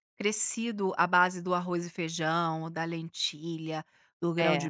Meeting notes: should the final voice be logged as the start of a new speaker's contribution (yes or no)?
no